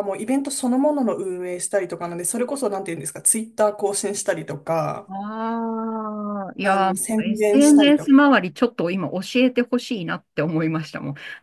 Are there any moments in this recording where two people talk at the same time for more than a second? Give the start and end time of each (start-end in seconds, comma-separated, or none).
6.6-8.1